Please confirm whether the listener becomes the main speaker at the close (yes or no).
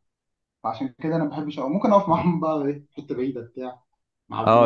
yes